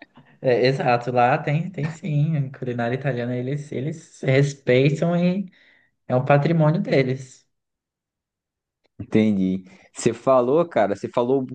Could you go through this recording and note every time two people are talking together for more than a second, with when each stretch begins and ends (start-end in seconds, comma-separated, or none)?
none